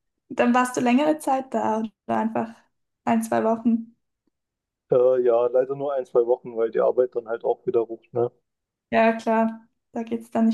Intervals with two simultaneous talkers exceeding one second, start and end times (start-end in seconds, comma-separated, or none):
none